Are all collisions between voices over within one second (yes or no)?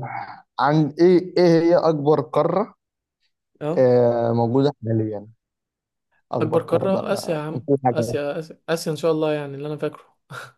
no